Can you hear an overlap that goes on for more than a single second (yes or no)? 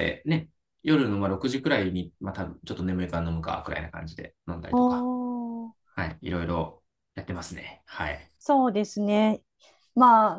no